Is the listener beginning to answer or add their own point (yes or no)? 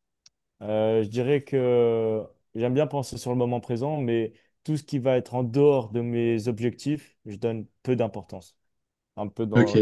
yes